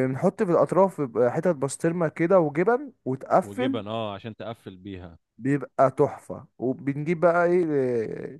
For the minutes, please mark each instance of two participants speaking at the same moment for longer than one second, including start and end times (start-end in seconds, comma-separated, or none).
none